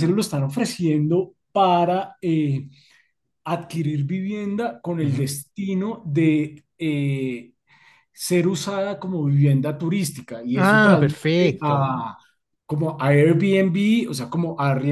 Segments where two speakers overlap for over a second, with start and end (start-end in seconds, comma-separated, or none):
10.6-11.9